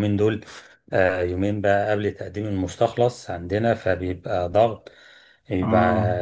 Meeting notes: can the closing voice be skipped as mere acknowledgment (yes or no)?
yes